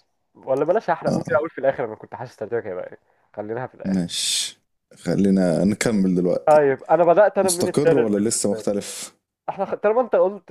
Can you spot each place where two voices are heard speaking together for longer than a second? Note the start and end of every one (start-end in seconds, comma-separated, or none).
7.4-8.7